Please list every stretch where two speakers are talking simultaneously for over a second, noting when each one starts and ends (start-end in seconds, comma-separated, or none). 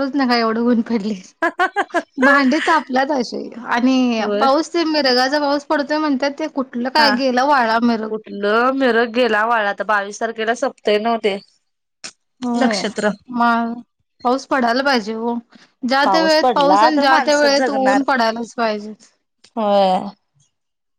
16.4-18.0